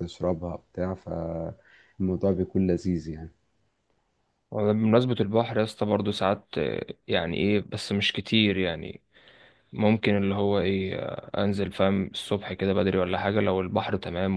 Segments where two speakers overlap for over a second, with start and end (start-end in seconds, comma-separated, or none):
none